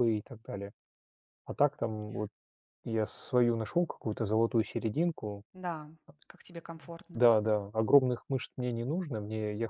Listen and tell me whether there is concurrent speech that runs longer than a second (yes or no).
no